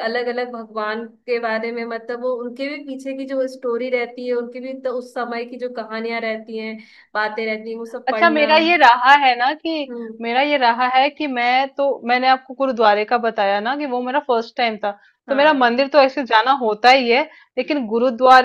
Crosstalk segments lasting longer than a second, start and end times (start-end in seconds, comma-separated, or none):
none